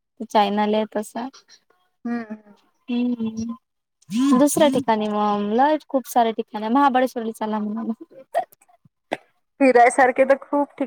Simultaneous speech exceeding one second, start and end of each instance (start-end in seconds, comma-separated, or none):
none